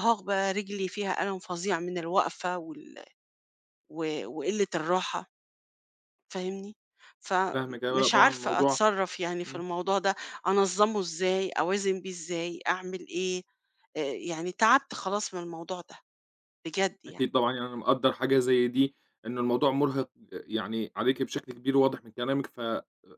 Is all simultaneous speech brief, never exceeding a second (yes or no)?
no